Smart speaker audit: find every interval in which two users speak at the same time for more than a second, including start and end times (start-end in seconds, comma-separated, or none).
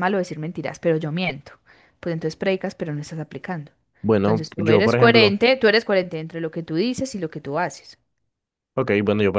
4.2-5.4